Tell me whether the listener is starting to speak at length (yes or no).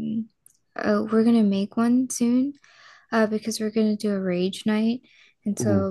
no